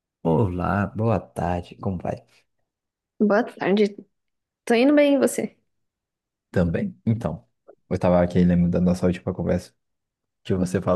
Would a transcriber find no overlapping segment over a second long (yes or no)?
yes